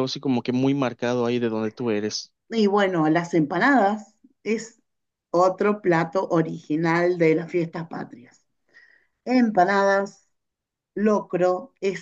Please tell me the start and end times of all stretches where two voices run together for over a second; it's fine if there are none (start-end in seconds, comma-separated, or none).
none